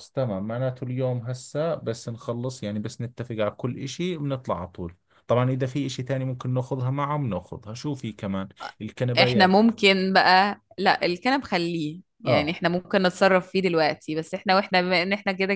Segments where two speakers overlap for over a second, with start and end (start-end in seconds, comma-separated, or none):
none